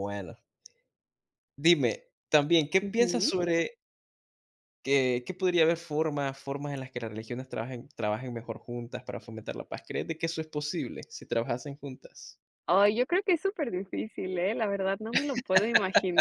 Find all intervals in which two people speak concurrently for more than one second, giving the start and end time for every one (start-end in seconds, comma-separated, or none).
none